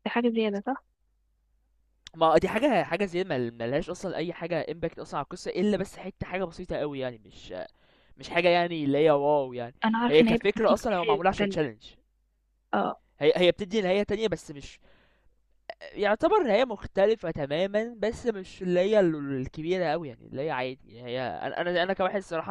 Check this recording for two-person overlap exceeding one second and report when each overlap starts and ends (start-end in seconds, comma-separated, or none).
9.8-11.6